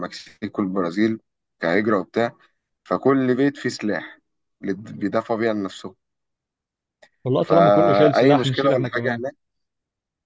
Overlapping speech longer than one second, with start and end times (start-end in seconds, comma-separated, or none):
7.4-9.2